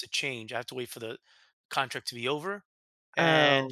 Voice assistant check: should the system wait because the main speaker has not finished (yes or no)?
yes